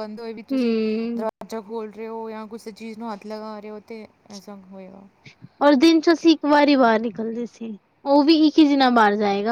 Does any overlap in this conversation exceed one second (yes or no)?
no